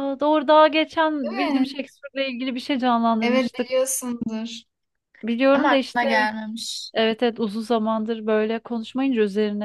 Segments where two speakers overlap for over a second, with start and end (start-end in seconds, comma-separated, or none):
none